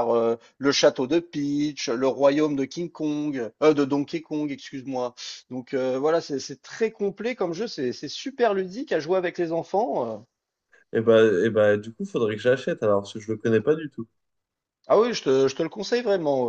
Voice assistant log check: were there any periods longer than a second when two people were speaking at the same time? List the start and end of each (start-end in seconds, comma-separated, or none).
none